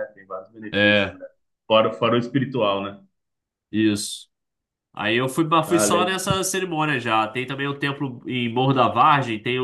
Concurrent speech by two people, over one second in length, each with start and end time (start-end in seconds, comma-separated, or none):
none